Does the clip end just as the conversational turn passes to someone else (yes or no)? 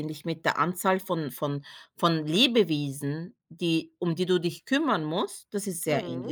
yes